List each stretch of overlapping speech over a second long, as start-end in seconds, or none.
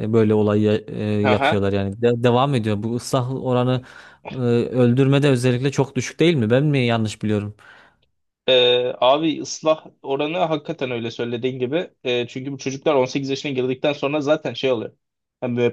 none